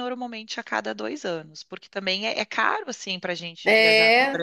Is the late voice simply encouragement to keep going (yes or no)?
no